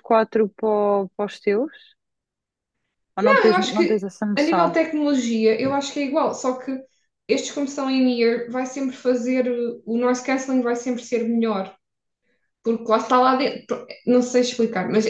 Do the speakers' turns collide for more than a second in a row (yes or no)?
yes